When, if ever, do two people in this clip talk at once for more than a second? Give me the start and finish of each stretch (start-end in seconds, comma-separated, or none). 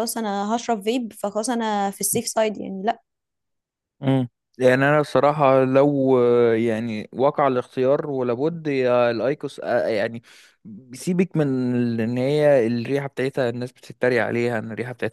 none